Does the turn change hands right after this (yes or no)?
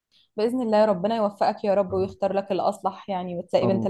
yes